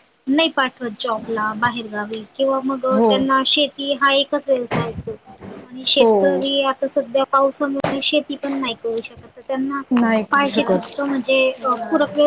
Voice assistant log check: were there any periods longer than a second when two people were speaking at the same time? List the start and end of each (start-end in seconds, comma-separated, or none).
none